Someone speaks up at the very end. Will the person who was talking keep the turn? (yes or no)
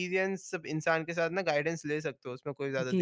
no